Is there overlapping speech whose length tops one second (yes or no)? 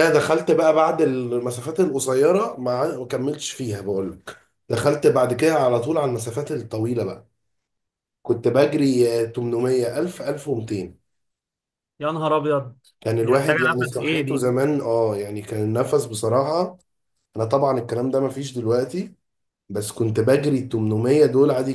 yes